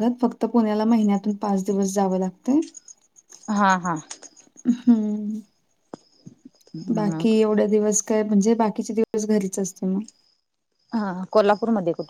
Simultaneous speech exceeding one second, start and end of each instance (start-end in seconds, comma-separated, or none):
none